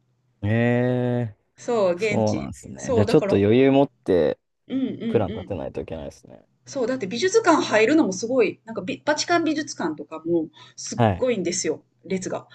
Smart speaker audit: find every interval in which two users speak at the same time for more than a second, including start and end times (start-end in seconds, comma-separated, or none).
2.0-3.4